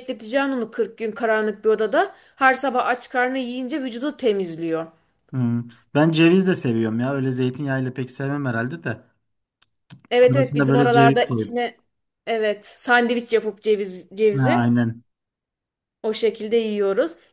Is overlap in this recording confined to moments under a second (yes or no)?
no